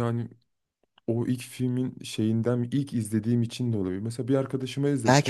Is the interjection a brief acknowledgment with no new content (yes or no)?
no